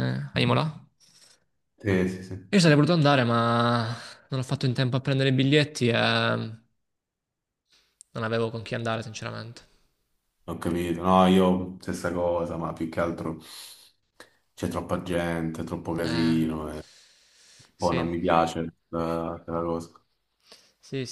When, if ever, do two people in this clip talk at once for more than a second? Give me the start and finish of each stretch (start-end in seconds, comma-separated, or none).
none